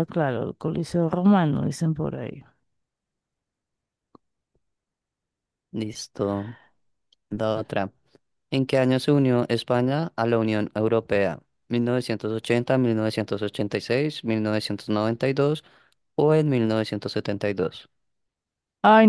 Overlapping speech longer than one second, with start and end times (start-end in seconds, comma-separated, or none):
none